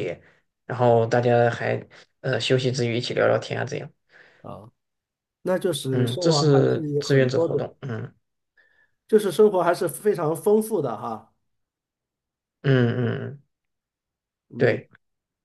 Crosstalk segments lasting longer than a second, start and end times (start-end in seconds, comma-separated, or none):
5.9-7.7